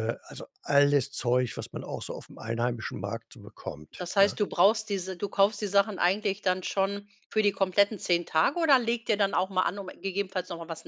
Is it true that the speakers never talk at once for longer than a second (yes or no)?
yes